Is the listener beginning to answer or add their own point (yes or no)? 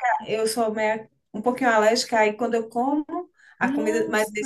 no